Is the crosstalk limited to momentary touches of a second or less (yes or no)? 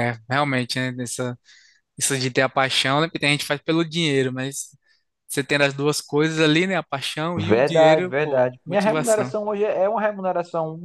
no